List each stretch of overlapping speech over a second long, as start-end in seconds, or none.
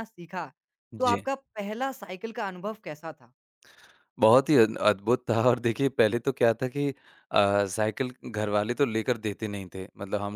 none